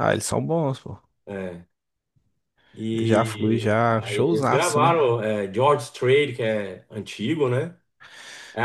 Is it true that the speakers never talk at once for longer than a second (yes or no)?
no